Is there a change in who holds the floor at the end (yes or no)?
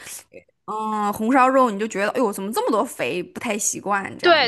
yes